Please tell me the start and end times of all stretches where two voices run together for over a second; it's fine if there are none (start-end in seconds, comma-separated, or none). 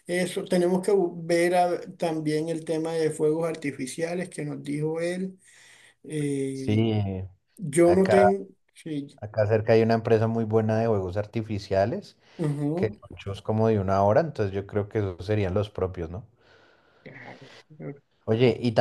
none